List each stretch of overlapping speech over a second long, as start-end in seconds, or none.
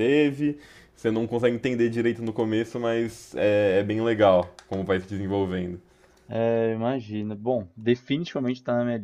none